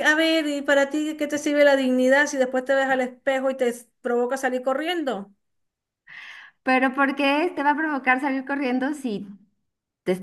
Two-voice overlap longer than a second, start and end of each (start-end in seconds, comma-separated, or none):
none